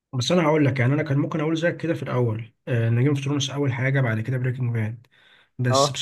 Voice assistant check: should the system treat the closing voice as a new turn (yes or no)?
no